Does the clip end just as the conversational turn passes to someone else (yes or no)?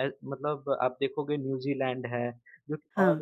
no